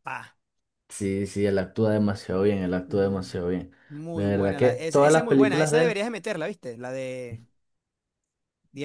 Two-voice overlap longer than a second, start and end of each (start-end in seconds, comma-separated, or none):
4.1-6.0